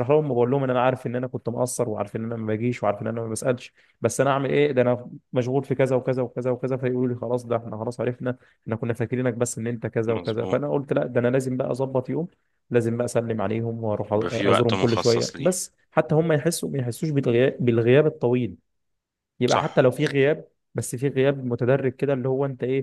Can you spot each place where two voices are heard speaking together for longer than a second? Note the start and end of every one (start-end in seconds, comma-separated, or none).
14.1-15.5